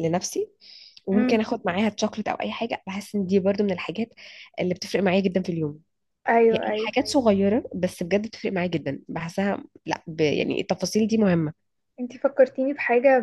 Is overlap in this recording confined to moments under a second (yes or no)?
yes